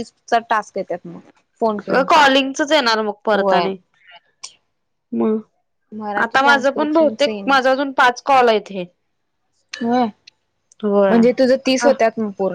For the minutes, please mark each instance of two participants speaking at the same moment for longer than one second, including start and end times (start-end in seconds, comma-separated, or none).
6.2-7.5